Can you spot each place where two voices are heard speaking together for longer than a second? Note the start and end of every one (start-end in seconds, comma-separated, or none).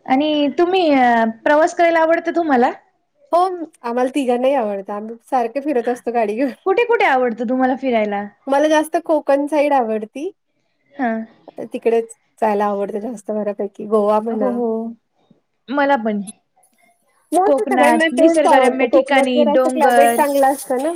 17.4-20.2